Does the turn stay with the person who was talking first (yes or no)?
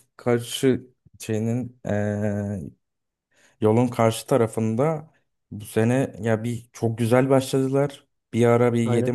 yes